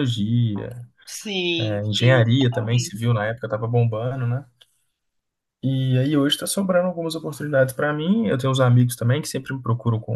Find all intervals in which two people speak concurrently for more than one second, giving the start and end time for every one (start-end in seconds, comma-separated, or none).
1.6-3.0